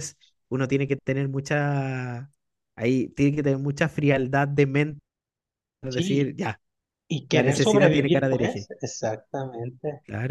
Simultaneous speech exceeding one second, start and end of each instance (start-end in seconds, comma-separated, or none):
7.3-8.7